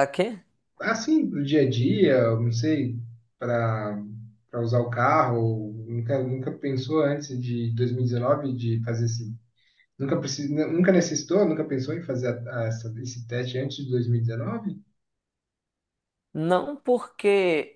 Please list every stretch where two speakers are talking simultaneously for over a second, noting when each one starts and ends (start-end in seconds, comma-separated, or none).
none